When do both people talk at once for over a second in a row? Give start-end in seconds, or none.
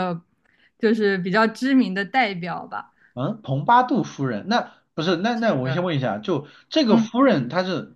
none